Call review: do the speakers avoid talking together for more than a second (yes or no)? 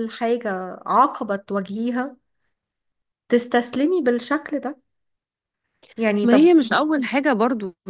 yes